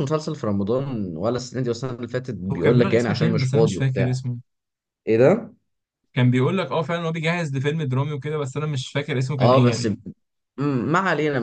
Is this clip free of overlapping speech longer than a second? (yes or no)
no